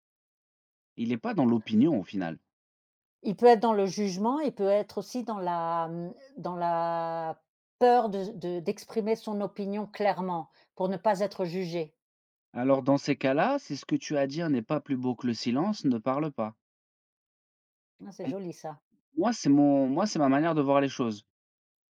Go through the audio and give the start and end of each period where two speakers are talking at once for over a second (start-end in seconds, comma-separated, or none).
none